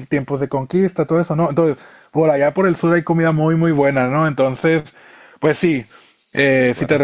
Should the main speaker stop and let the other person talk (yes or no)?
no